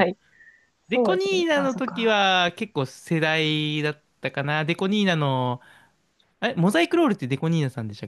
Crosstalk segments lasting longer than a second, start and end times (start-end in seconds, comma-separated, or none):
0.9-2.3